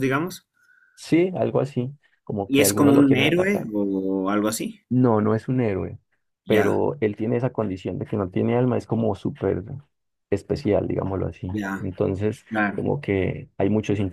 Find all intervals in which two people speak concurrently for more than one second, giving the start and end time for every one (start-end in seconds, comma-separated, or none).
2.5-3.7